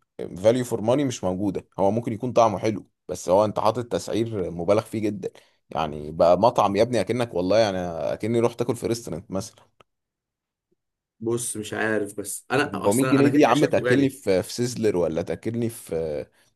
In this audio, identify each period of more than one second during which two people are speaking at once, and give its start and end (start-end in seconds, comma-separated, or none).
12.7-14.1